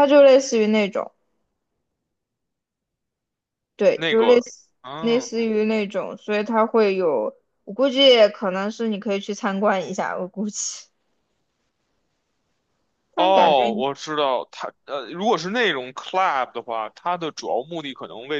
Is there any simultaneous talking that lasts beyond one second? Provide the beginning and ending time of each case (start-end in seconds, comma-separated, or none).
3.9-5.5